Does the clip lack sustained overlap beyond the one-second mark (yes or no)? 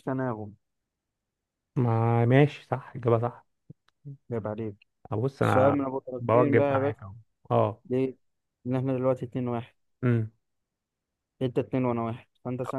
no